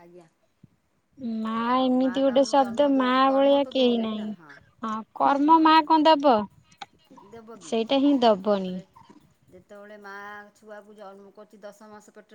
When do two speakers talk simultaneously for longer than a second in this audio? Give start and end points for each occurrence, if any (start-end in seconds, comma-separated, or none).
1.8-4.3